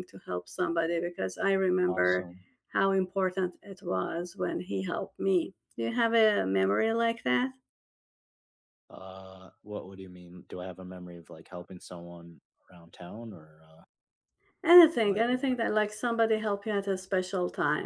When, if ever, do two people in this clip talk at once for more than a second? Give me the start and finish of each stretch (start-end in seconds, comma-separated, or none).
none